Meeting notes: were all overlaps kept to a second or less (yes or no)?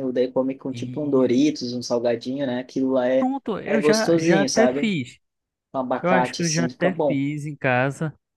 no